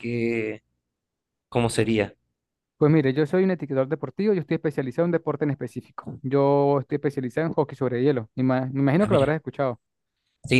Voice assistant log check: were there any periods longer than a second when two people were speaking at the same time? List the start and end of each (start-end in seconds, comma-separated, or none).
none